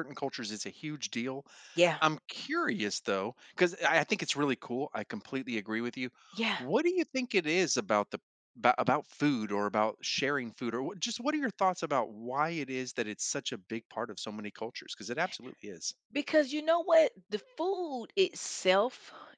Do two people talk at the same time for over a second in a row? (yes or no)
no